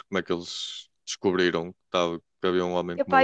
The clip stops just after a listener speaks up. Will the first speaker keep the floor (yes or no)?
no